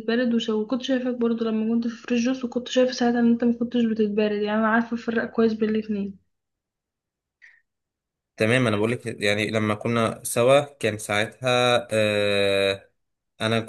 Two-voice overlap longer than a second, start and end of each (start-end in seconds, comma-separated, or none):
none